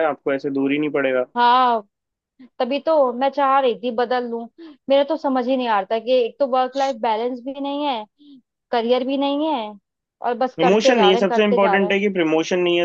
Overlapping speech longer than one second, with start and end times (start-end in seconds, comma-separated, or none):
10.6-12.0